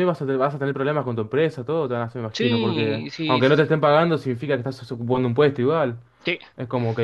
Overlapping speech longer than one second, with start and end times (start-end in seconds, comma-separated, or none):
2.3-3.7